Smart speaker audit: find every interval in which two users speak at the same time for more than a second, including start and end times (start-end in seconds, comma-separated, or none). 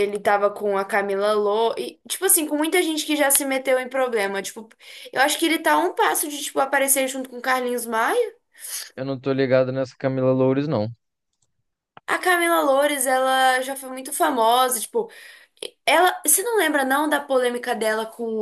none